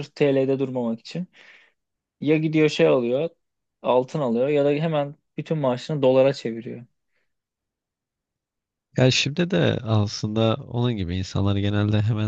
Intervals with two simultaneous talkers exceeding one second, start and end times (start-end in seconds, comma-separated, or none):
none